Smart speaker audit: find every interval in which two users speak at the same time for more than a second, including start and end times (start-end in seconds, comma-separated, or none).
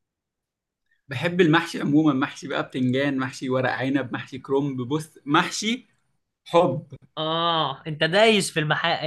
none